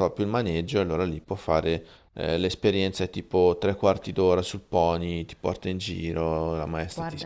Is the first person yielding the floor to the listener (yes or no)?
yes